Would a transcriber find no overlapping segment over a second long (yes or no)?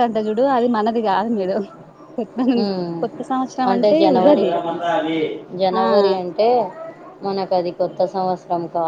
yes